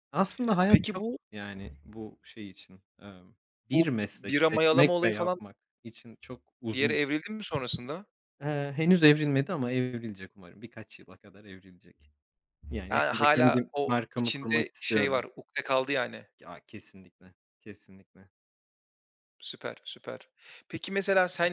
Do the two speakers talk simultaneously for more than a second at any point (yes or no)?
yes